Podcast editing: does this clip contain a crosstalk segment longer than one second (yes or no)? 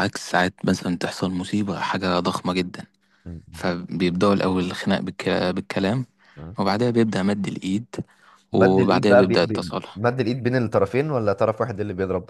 yes